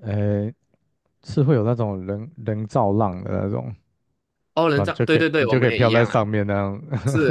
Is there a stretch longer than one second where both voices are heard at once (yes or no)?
yes